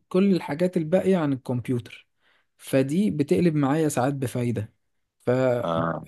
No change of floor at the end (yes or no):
yes